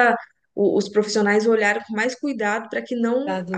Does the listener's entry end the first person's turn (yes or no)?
no